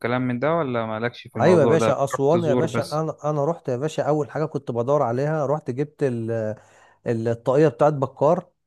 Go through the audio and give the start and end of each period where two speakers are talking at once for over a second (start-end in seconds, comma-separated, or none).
1.4-3.0